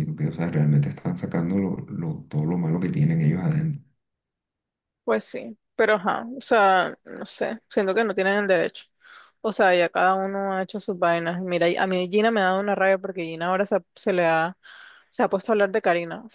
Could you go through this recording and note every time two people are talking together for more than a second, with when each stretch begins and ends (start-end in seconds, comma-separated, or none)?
none